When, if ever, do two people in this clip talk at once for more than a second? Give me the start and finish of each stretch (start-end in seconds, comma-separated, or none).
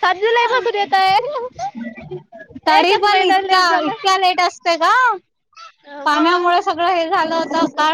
2.8-4.3